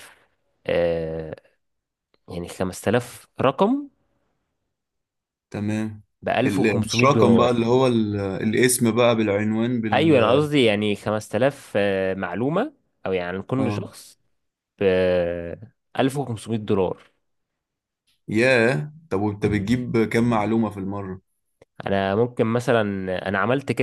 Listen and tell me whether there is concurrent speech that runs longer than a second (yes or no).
yes